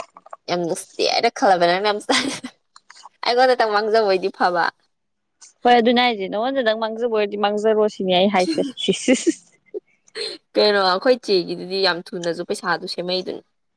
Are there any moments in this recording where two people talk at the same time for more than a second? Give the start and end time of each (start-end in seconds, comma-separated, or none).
none